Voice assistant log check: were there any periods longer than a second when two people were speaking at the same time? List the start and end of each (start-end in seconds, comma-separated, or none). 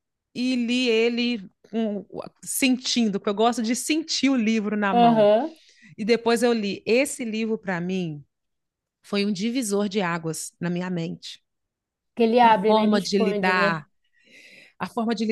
12.4-13.8